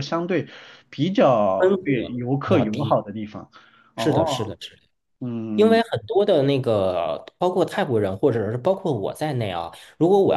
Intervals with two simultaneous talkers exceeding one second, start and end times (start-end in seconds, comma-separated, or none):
1.6-3.0